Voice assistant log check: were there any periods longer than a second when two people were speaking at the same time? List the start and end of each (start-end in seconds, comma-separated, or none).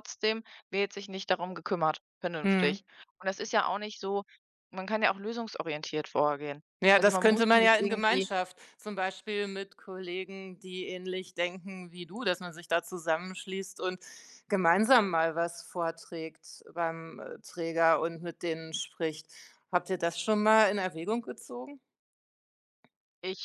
6.8-8.3